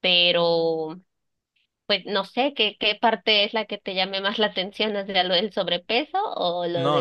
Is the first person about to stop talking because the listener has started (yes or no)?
yes